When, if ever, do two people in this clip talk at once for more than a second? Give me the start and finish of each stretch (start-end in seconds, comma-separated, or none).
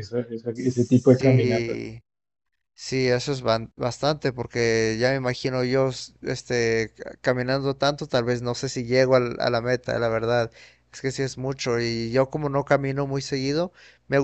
0.5-1.8